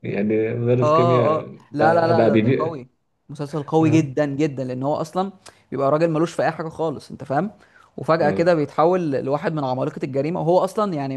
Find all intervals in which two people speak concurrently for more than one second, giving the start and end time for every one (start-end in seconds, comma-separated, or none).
0.8-2.8